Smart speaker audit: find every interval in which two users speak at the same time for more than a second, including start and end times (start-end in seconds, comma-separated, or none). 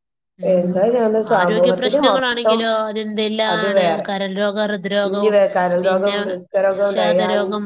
none